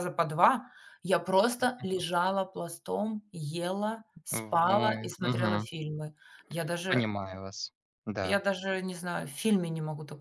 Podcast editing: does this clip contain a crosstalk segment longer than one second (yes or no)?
yes